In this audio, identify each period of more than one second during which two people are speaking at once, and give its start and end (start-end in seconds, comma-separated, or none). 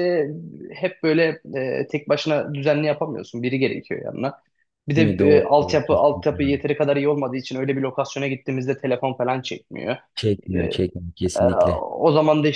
4.9-6.6